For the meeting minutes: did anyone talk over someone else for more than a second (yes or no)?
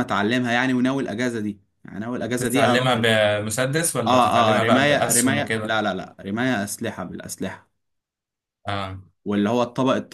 yes